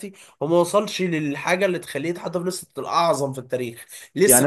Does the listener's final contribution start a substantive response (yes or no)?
no